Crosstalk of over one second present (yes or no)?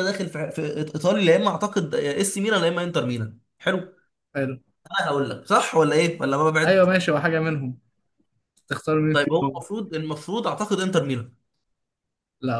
no